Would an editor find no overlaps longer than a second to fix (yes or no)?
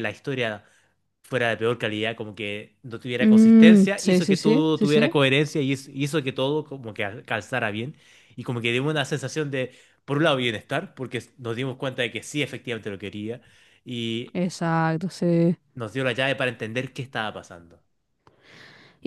no